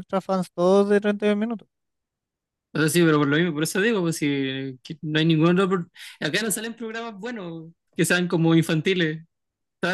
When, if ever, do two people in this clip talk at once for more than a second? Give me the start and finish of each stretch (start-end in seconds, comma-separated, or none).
none